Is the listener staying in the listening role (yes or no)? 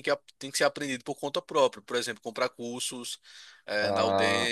no